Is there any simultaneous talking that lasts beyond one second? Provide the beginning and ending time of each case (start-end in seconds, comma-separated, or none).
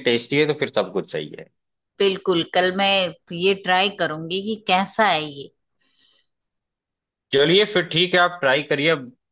none